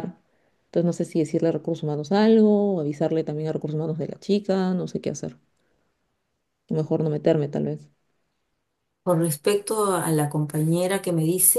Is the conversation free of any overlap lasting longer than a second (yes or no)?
yes